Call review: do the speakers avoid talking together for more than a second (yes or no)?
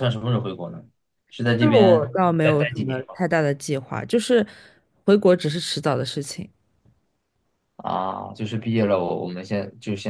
no